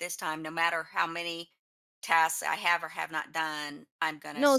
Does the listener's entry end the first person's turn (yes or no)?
yes